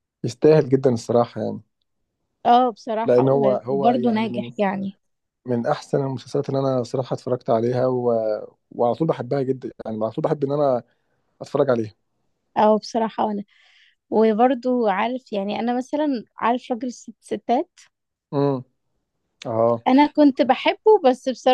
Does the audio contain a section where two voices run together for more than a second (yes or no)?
yes